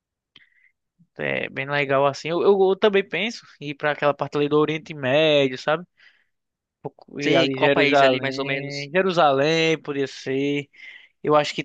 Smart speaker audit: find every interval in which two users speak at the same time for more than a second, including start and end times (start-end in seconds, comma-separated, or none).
7.2-8.9